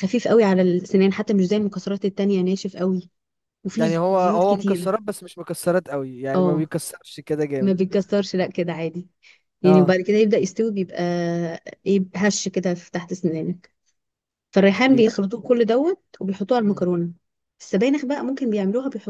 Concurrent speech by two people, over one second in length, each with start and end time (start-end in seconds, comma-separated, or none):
3.7-5.0